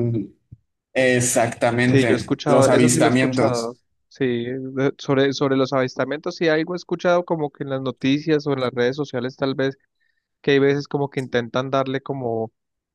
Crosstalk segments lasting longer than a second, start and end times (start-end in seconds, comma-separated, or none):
1.8-3.7